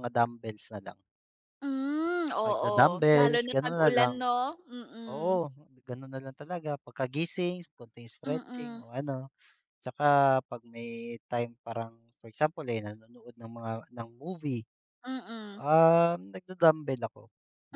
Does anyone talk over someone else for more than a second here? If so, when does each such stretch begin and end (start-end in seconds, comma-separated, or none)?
2.4-4.2